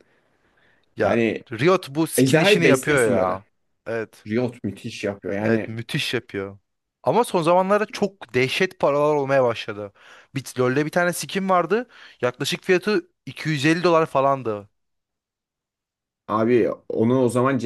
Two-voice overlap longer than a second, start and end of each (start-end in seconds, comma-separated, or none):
2.2-3.4